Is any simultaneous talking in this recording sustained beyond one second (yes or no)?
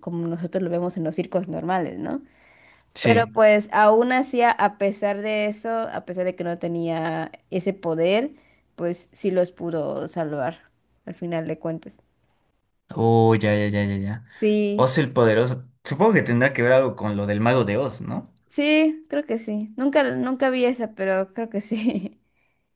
no